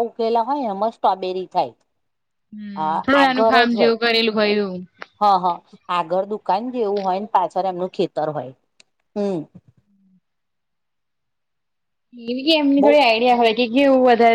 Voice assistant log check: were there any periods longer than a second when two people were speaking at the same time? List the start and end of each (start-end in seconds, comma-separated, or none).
none